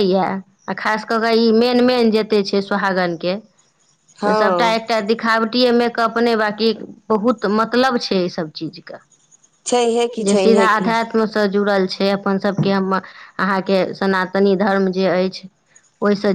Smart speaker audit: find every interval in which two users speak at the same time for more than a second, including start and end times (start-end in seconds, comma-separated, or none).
none